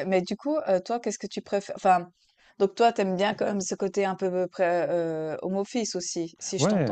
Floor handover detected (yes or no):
yes